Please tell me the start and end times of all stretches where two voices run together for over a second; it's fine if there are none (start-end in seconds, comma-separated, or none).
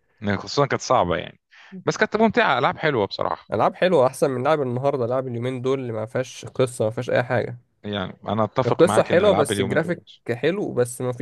8.7-10.0